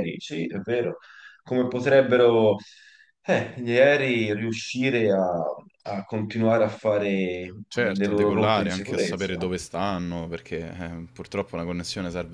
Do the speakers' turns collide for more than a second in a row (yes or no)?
yes